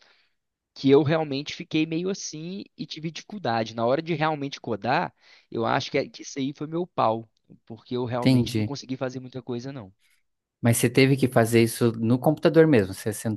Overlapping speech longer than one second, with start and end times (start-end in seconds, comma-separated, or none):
none